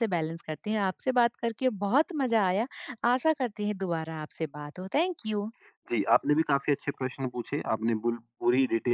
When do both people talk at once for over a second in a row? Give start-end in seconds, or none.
none